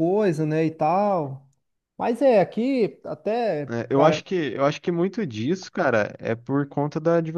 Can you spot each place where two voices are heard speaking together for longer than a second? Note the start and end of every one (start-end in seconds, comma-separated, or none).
none